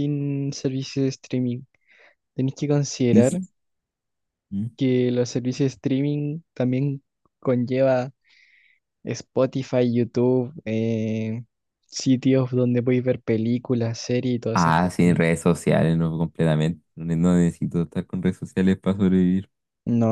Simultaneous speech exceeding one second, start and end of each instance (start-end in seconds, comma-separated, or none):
none